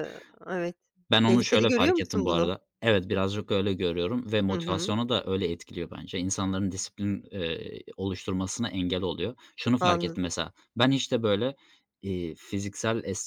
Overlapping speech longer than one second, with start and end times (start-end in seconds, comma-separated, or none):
1.2-2.5